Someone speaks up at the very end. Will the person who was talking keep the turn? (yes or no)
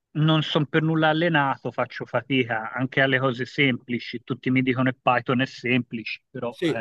no